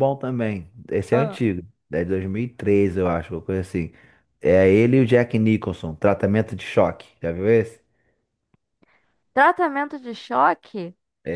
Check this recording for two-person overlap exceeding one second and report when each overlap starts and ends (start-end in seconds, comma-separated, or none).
none